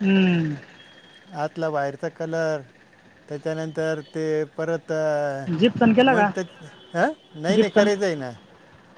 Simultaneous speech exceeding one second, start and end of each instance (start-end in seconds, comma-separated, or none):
none